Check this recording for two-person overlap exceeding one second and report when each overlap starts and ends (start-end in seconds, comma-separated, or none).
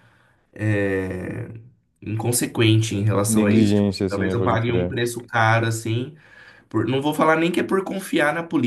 3.3-5.0